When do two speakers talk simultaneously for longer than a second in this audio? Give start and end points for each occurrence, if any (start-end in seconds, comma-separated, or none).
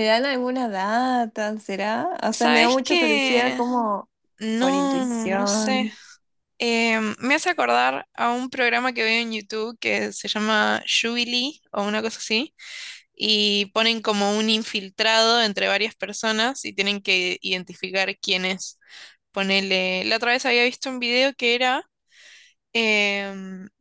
2.3-3.6, 4.6-5.9